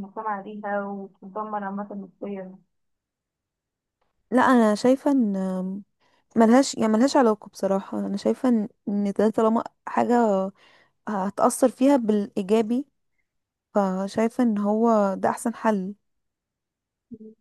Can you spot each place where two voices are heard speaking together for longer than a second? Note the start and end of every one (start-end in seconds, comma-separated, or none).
none